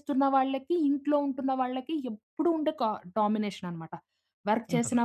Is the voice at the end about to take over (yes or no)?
no